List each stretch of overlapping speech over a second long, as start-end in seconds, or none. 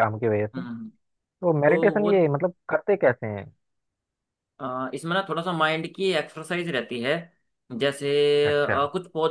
none